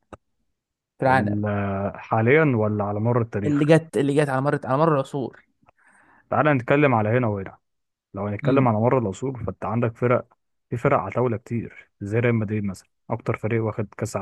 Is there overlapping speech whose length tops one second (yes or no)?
no